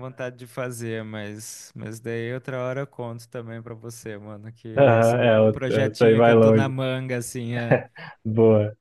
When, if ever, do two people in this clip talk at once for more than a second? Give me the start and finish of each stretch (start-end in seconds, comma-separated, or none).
4.8-6.7